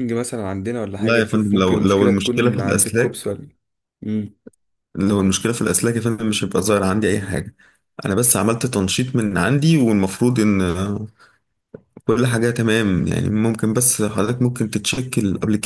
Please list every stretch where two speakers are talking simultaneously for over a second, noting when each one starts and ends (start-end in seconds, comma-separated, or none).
1.0-3.2